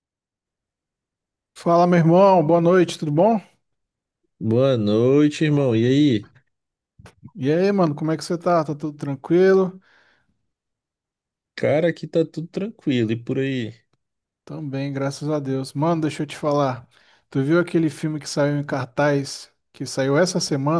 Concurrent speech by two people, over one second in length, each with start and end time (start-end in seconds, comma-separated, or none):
none